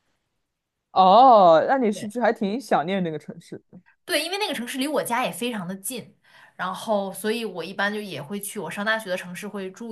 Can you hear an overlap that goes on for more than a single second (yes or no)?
no